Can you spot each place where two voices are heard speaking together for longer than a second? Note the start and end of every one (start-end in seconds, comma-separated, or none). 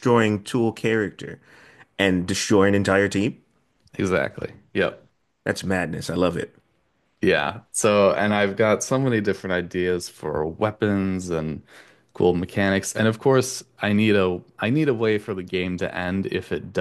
none